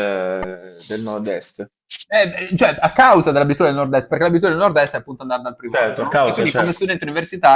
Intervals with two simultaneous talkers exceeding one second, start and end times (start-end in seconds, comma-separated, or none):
5.7-6.9